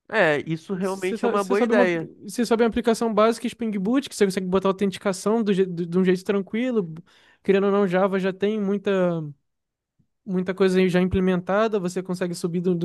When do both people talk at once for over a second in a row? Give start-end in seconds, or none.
0.7-2.1